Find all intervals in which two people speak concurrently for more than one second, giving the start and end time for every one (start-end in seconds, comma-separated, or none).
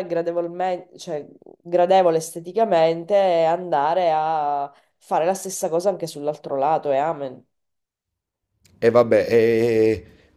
none